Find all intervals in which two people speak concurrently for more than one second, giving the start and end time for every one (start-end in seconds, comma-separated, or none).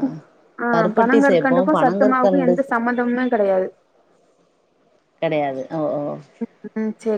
0.7-2.5